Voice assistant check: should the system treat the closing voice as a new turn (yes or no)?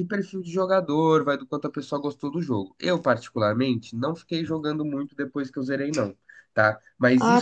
yes